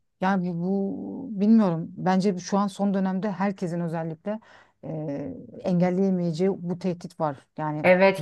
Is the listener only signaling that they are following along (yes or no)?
no